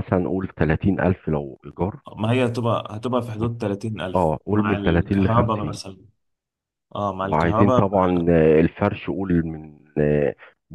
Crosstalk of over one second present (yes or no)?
yes